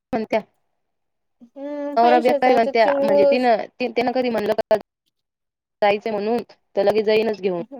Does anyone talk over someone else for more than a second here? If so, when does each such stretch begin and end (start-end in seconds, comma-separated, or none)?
2.0-3.5